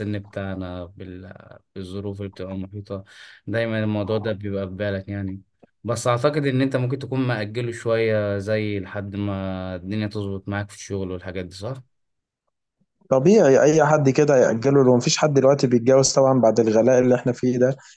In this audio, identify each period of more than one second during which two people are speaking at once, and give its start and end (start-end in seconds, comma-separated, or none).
none